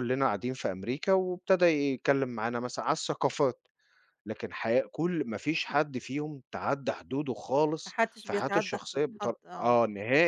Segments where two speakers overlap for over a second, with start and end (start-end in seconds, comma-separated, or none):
7.8-9.8